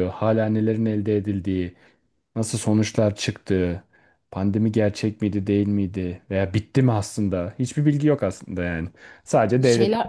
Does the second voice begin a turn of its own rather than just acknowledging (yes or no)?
no